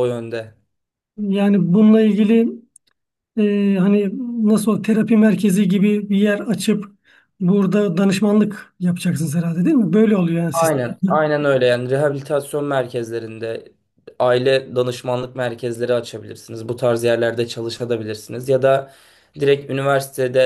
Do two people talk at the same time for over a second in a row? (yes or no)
no